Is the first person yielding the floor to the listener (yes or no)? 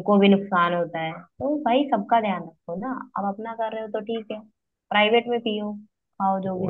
yes